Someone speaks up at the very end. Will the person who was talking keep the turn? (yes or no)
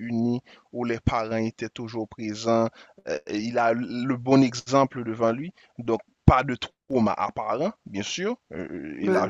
yes